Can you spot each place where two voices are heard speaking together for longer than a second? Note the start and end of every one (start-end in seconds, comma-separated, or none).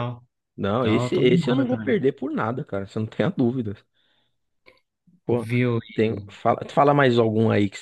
0.8-2.0